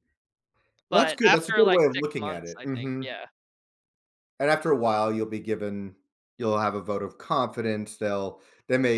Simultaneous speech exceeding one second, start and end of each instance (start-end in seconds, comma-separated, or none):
0.9-3.0